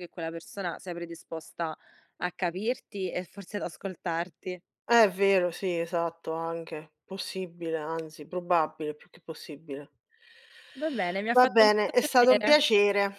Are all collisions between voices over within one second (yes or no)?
no